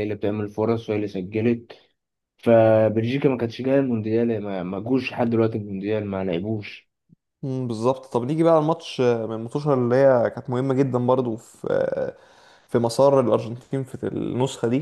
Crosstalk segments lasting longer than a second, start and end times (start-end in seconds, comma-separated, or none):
none